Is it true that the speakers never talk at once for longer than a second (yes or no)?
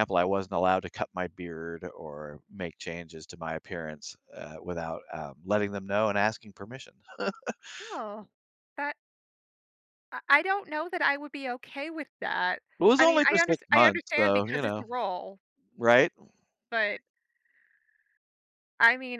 no